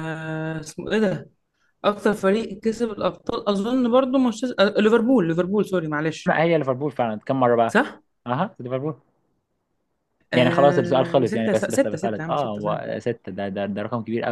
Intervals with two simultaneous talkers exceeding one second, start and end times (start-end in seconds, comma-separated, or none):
10.3-12.8